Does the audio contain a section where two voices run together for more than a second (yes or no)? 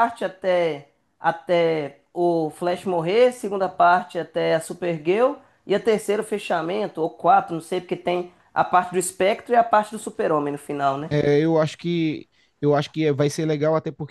no